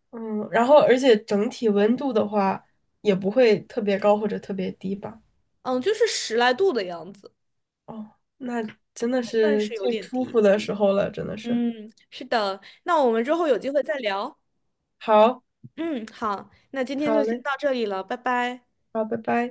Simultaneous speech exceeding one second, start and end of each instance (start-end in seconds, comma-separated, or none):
9.2-10.4